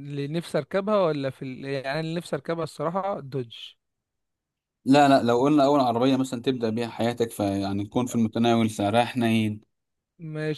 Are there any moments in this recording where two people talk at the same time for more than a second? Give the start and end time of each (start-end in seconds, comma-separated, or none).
none